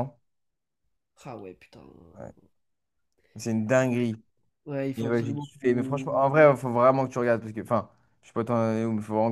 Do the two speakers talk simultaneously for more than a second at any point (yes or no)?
yes